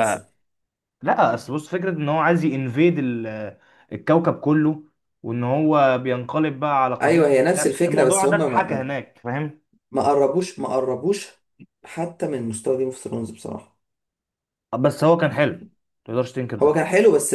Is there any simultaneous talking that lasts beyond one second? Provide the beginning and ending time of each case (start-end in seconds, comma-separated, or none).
7.0-8.9